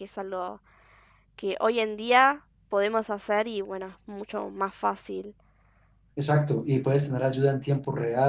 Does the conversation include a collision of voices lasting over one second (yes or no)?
no